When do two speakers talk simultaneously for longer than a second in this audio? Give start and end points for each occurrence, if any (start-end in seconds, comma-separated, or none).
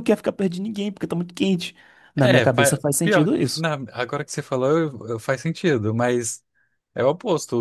2.2-3.6